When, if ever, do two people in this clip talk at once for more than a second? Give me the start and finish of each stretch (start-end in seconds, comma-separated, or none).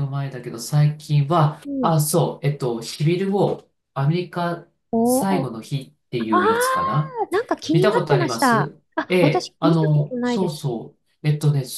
7.7-10.6